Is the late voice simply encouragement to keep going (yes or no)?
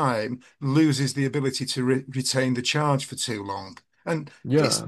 yes